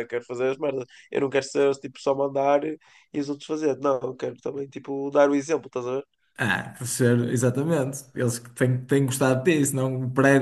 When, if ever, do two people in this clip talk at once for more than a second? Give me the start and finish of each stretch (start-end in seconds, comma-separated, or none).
none